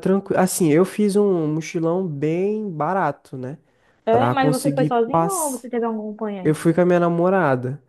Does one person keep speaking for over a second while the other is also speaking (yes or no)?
yes